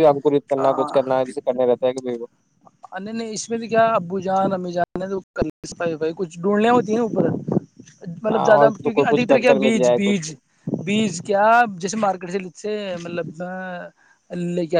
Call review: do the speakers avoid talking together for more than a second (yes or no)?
no